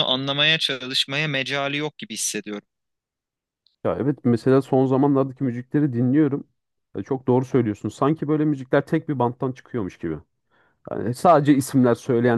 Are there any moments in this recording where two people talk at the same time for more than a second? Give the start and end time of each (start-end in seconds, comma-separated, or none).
none